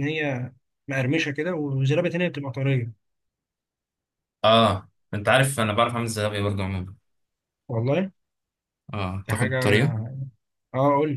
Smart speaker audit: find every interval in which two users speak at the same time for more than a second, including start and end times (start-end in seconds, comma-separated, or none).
none